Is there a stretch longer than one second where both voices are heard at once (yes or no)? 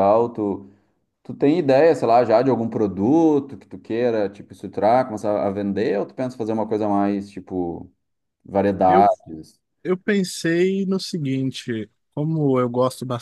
no